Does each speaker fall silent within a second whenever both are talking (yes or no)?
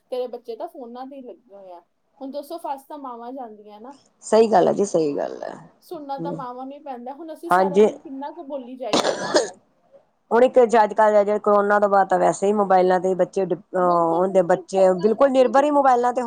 no